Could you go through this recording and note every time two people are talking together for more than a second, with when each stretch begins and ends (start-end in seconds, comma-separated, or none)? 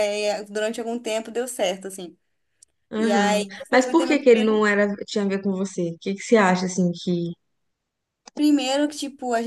3.0-4.6